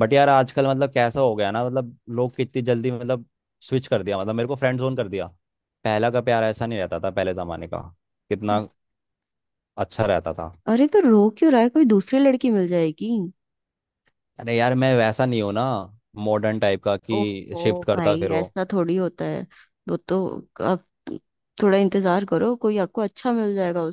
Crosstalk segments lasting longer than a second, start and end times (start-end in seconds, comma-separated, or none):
17.1-18.4